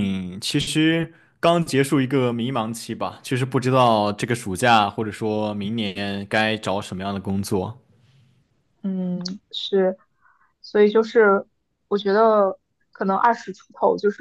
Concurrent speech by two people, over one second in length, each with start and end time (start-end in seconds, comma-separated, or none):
none